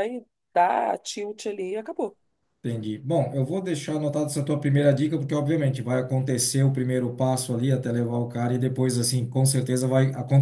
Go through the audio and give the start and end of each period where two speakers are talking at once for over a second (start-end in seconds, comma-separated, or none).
none